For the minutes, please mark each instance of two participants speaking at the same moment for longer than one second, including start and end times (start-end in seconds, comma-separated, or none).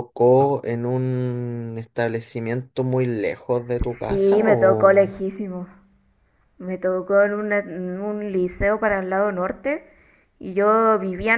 3.9-5.1